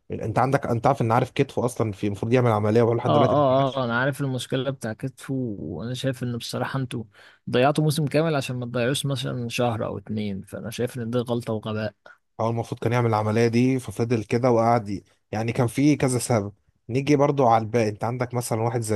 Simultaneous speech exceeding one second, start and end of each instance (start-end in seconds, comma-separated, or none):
none